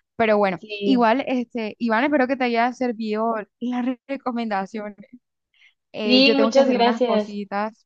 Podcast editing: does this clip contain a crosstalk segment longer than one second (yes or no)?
yes